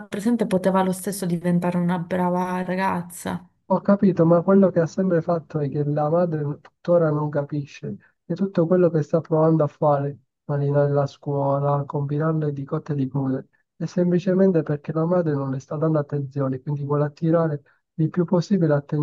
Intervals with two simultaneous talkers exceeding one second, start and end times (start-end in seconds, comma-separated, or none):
none